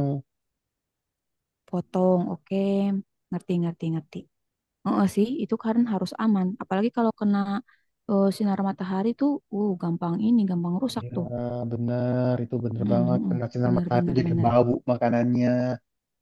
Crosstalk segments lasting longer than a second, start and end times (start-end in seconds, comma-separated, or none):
12.8-14.5